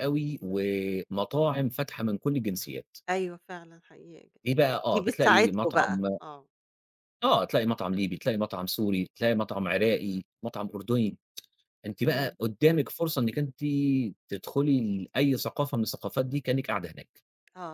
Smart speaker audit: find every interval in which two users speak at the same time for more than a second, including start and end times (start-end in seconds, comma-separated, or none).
4.9-6.2